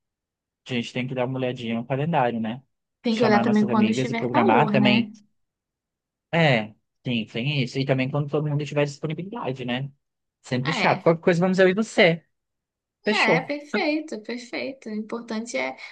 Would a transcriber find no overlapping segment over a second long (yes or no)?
no